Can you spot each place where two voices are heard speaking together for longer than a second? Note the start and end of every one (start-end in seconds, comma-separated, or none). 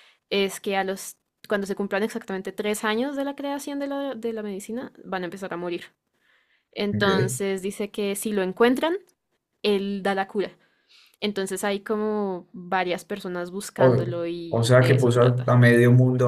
13.8-15.5